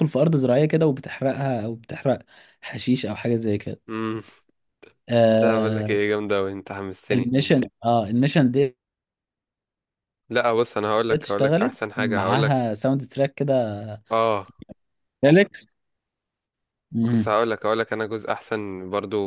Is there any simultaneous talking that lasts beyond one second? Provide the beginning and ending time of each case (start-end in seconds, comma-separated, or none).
11.1-12.6